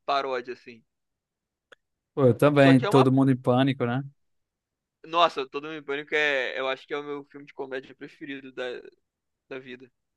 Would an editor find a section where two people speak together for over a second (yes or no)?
no